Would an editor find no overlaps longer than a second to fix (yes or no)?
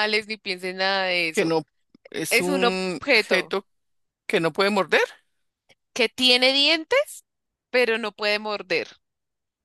no